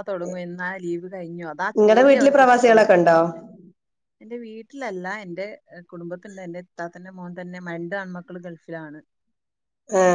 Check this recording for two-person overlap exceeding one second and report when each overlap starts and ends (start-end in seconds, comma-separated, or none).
1.8-3.0